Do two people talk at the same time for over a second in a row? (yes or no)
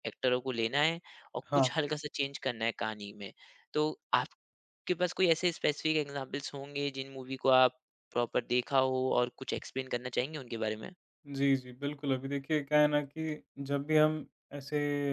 no